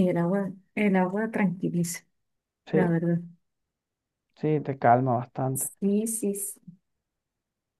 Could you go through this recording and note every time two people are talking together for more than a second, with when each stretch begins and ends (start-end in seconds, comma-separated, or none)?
none